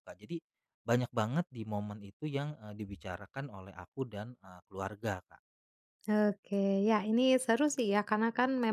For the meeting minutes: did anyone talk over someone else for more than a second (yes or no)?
no